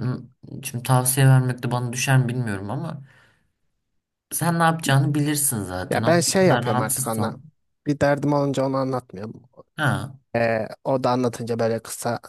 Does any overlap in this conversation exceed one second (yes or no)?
yes